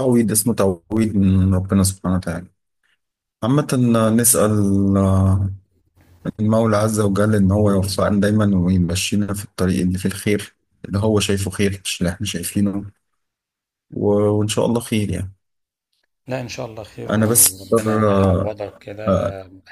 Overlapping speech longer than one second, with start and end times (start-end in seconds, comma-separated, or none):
17.1-18.5